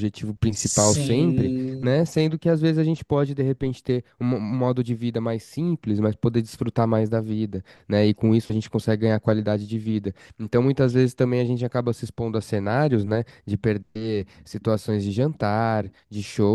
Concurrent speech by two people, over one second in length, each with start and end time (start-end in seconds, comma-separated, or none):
0.5-2.0